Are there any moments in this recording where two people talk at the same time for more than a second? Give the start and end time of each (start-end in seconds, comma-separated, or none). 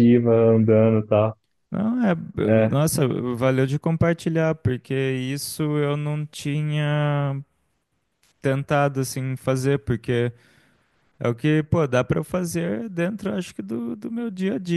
none